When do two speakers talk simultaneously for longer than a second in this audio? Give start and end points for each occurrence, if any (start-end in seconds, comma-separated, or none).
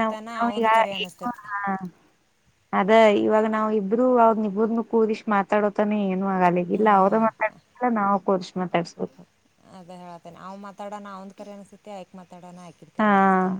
none